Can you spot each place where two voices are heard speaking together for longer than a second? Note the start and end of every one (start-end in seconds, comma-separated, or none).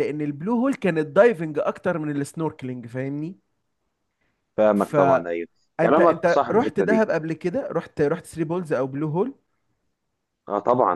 4.8-7.0